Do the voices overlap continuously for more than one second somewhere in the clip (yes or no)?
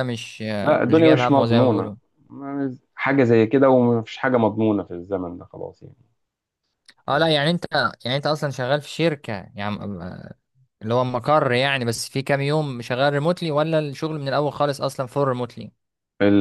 yes